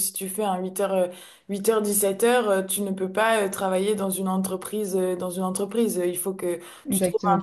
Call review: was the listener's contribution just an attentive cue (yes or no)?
yes